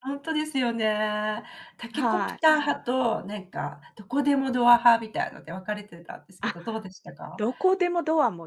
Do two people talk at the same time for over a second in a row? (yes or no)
no